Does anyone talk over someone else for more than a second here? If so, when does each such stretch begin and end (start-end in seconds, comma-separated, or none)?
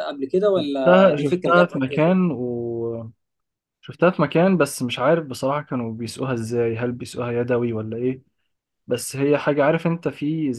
0.6-2.1